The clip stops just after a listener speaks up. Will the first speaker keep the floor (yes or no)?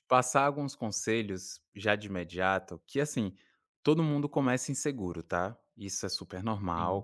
yes